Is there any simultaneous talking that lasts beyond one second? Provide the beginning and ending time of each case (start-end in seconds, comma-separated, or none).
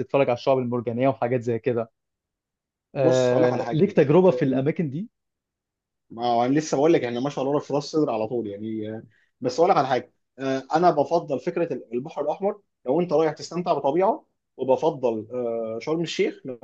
3.0-4.6